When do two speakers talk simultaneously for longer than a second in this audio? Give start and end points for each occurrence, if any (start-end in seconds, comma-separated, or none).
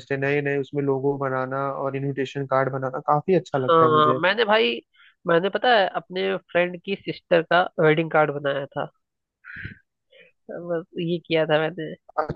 none